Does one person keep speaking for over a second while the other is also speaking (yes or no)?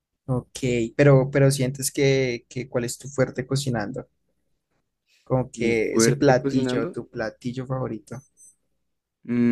yes